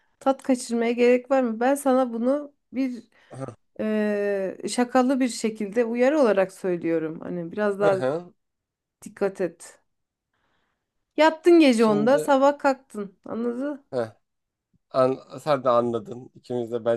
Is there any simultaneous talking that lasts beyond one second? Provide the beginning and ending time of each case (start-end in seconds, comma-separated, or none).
none